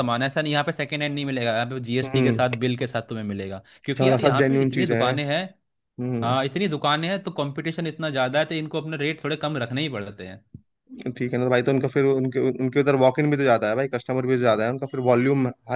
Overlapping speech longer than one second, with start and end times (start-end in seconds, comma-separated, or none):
3.9-5.1